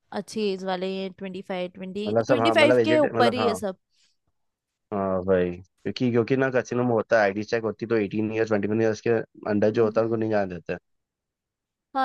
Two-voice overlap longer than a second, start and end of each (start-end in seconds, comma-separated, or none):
2.1-3.6